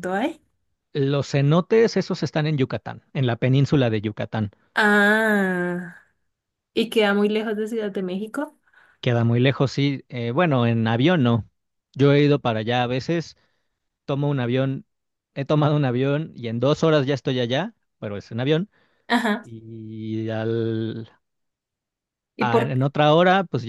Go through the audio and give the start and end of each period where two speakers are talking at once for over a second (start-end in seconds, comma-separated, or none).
none